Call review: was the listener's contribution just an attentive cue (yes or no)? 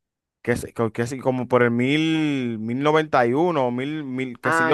no